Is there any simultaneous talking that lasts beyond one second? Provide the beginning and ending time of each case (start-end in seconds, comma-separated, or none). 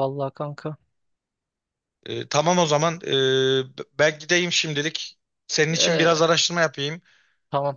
none